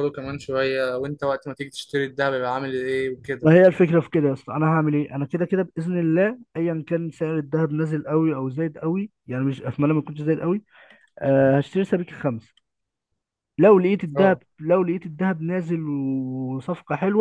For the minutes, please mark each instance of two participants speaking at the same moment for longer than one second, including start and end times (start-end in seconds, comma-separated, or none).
none